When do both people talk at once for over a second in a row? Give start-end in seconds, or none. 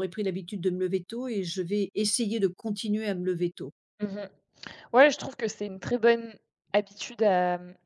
none